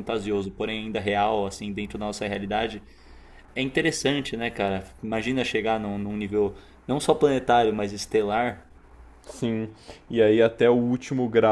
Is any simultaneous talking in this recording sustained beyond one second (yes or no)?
no